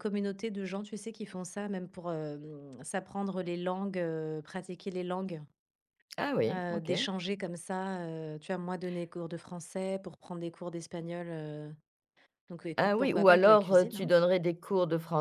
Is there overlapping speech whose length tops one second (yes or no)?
yes